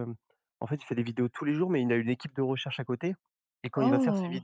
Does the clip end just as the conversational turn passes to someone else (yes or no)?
no